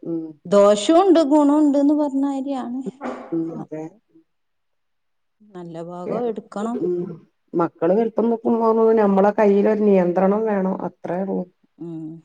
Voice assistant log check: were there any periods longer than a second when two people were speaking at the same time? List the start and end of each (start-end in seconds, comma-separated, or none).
none